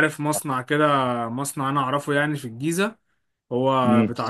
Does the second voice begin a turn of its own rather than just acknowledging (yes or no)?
no